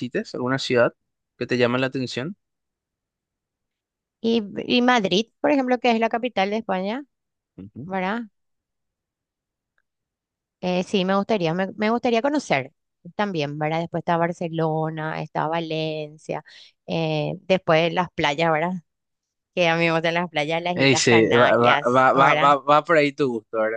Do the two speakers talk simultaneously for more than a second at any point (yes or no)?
yes